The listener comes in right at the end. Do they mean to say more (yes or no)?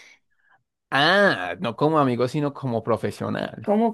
yes